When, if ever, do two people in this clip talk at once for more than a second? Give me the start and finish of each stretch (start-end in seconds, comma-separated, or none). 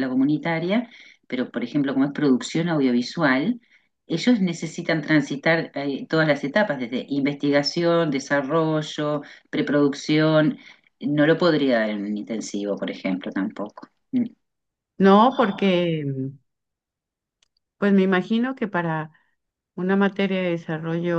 none